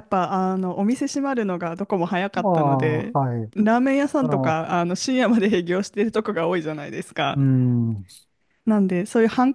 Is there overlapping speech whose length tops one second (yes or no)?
no